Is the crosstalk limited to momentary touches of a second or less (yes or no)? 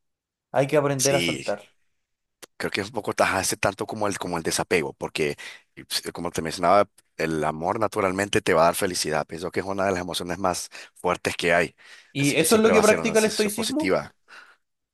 no